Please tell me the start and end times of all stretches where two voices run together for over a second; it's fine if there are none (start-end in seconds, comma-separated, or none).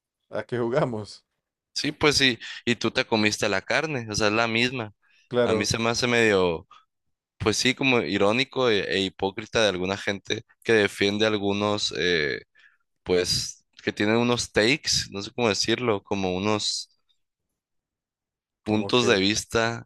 none